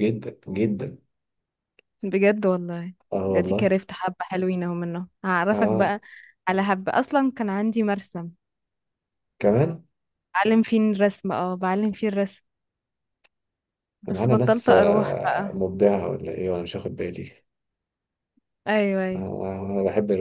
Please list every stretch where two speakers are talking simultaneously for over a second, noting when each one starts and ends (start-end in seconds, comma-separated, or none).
14.1-15.6